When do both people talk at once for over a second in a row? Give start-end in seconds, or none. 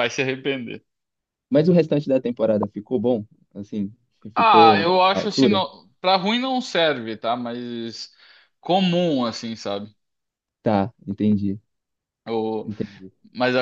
4.3-5.6